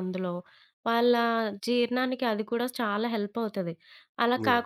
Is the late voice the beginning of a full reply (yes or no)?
no